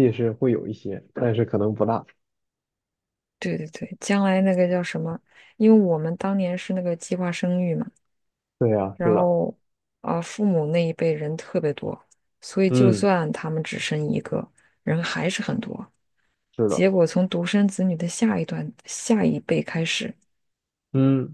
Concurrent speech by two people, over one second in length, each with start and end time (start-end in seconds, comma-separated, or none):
none